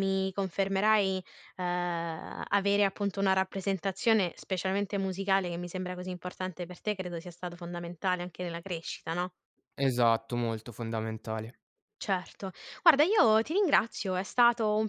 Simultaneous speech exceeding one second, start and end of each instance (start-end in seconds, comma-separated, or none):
none